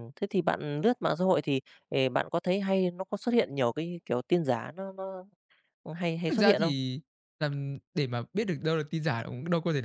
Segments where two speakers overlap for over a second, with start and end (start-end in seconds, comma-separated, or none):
none